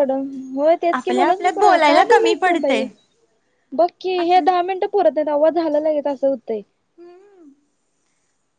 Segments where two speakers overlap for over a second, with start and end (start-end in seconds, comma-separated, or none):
0.9-2.8